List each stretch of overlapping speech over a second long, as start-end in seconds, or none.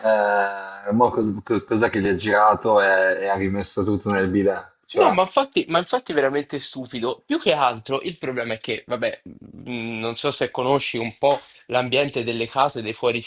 none